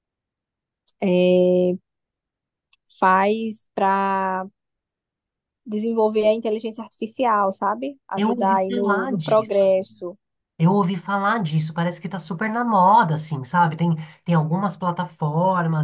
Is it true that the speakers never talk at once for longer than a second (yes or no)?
no